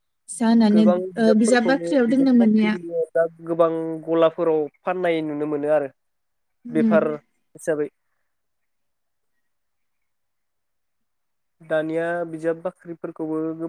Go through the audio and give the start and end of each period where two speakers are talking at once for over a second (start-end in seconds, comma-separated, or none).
0.7-2.7